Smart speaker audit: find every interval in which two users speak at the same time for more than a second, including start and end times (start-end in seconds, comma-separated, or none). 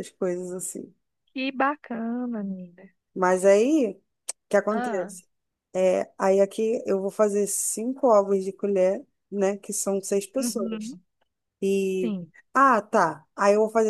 none